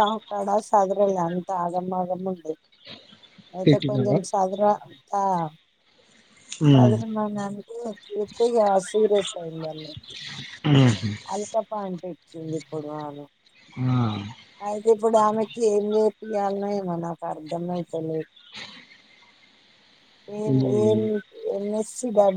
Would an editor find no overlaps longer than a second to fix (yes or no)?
yes